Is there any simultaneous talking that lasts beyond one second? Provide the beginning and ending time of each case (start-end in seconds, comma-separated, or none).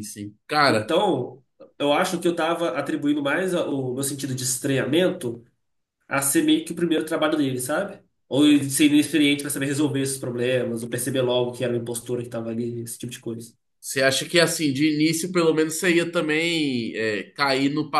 none